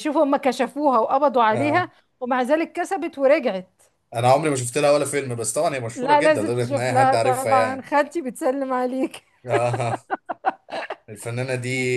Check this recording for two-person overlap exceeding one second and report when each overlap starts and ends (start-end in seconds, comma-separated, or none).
6.0-7.9